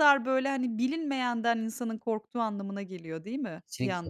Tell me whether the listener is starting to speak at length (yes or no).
yes